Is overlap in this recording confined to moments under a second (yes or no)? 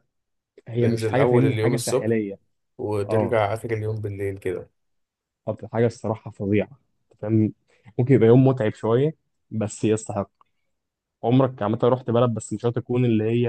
no